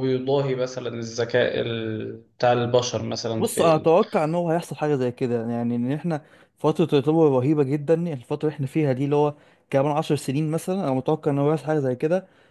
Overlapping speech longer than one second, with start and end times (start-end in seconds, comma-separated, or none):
none